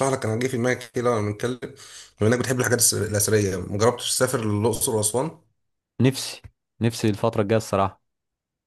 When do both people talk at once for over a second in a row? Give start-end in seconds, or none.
none